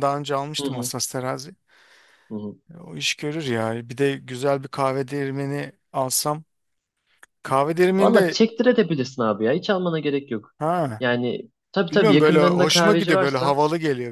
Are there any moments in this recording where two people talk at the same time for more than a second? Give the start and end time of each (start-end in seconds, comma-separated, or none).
11.9-13.6